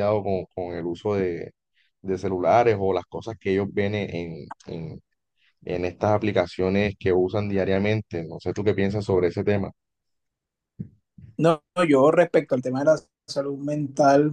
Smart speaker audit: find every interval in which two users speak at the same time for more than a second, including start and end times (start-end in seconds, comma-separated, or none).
none